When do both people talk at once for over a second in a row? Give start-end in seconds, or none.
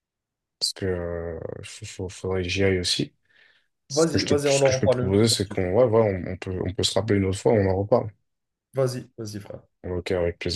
3.9-5.6